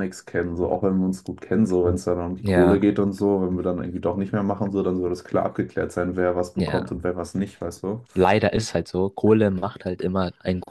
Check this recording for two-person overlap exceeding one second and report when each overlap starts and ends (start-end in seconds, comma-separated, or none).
none